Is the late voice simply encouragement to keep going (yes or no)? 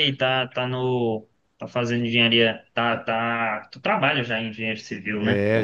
no